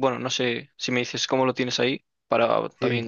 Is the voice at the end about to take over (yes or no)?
yes